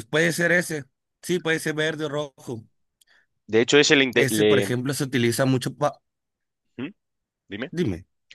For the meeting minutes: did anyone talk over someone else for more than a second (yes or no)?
no